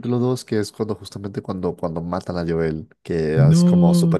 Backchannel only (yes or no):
yes